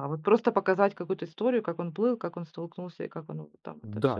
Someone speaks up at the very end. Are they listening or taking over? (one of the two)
taking over